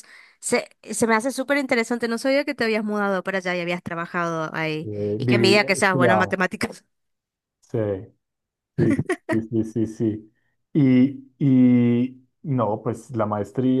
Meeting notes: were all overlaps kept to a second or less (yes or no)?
no